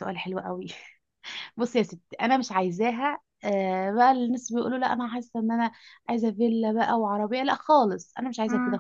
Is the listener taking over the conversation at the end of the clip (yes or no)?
no